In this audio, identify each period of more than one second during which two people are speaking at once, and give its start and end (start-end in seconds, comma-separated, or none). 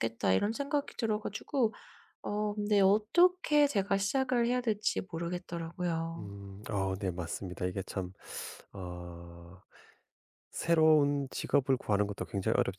none